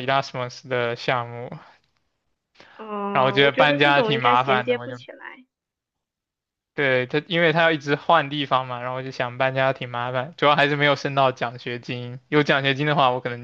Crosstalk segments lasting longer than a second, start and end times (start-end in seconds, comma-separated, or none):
3.1-5.0